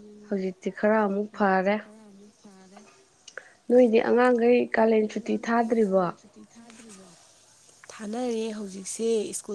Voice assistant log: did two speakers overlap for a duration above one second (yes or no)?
no